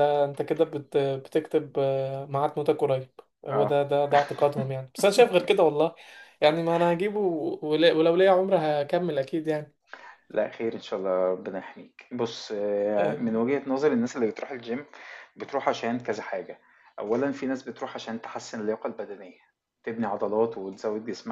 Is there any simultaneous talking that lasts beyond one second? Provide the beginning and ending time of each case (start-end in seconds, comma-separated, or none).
none